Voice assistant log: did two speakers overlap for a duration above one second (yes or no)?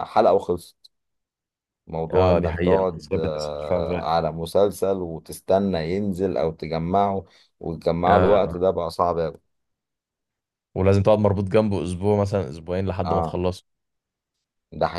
yes